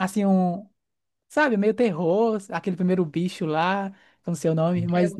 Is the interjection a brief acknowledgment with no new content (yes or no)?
yes